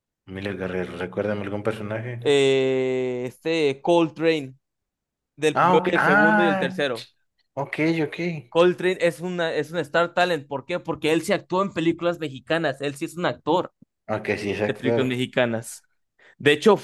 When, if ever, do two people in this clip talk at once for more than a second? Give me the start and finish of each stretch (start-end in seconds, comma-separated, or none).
5.5-6.8